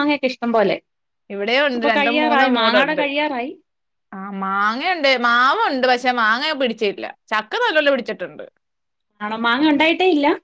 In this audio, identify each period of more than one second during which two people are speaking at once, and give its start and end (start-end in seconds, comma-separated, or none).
none